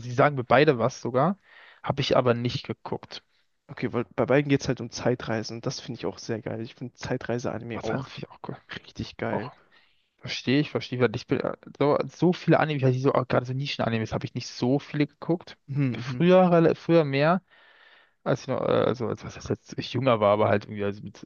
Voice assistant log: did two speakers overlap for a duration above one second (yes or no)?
no